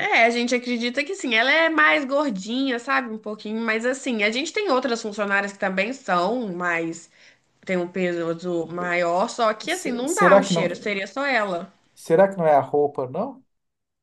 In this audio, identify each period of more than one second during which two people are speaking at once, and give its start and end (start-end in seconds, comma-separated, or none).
9.7-10.9